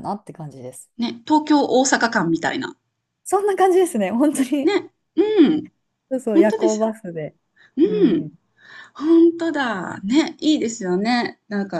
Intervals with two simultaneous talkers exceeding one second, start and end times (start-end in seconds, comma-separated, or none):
none